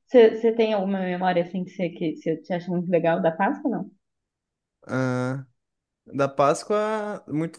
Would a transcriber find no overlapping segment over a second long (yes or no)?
yes